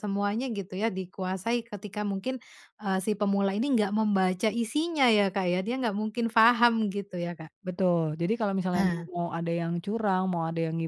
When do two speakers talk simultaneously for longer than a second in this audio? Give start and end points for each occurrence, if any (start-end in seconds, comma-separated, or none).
none